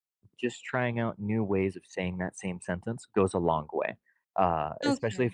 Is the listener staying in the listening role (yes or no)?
no